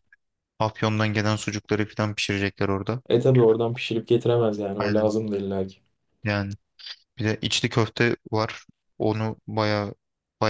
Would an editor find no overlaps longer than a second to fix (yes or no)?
yes